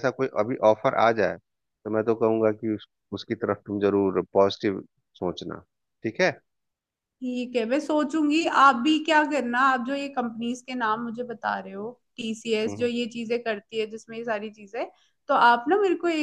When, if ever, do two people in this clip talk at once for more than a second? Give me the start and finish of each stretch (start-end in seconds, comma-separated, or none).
none